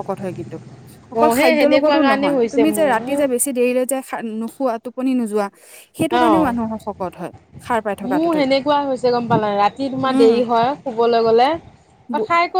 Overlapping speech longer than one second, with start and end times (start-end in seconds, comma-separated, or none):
1.2-3.2